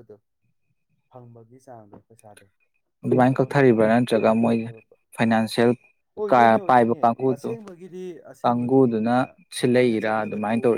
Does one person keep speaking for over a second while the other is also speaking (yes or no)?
yes